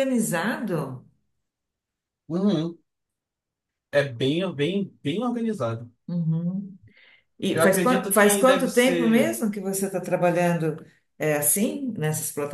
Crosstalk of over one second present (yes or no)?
yes